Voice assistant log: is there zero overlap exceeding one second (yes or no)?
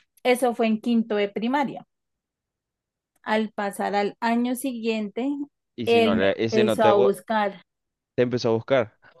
no